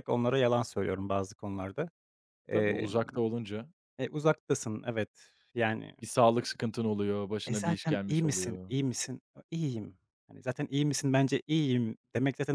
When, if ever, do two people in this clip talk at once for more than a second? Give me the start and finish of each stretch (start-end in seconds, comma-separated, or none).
7.5-8.7